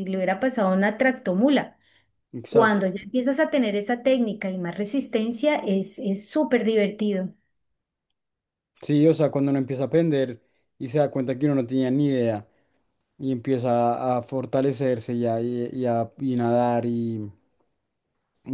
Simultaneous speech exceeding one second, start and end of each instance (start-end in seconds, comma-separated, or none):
none